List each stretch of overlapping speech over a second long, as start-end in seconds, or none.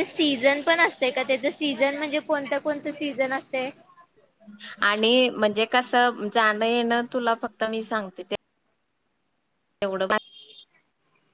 none